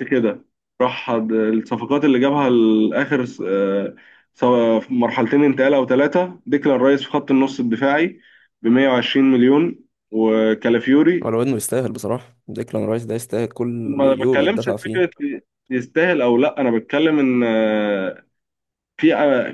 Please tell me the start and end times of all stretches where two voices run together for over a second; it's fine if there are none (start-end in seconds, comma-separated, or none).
13.9-15.1